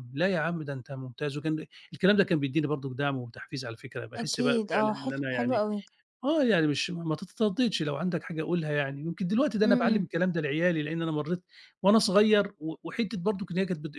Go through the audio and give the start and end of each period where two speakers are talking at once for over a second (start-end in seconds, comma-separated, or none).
4.2-5.6